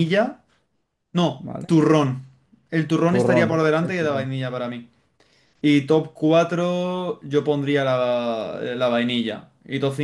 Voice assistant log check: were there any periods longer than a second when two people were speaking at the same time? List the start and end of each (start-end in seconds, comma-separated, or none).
3.1-4.3